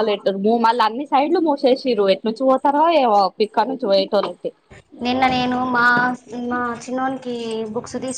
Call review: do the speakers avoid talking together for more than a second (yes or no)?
yes